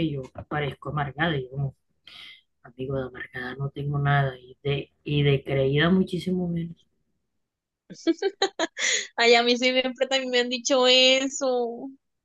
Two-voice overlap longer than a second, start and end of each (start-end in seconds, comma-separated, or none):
none